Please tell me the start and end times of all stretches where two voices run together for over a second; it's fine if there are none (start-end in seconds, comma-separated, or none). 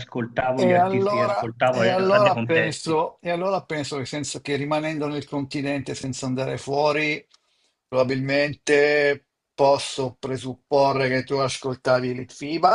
0.5-3.0